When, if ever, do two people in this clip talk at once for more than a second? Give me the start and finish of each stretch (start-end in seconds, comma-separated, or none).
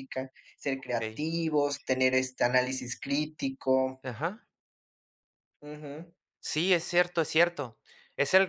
none